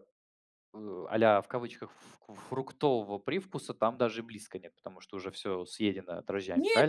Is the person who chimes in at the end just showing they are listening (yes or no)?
no